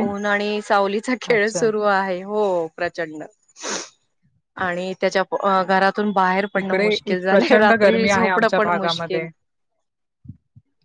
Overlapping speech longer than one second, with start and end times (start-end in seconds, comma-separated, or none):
6.6-9.3